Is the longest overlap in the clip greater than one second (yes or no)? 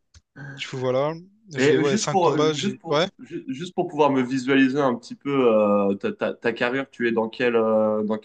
yes